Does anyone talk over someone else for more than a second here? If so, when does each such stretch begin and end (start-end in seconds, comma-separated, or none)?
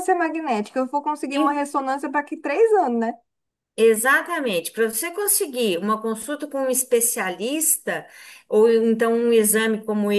none